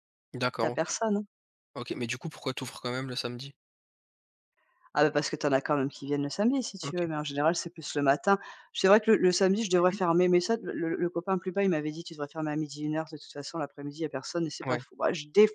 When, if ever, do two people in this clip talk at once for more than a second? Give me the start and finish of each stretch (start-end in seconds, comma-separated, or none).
none